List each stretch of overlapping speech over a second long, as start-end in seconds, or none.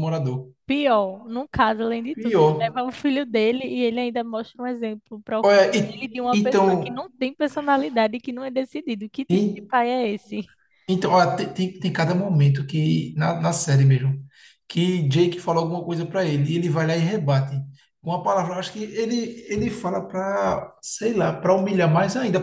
5.4-6.9